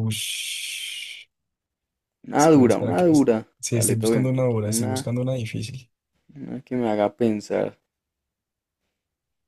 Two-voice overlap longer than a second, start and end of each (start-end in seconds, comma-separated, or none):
2.4-5.1